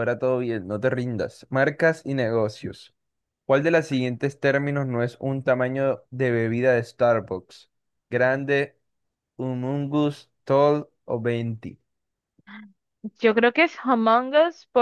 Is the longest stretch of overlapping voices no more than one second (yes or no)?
yes